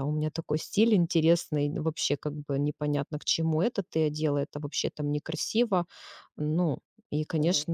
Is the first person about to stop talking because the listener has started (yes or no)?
no